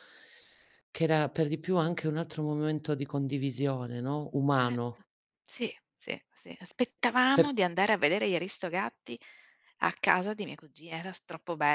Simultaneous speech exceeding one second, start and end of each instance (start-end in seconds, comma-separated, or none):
none